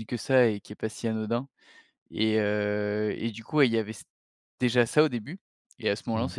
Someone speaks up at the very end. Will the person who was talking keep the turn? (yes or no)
yes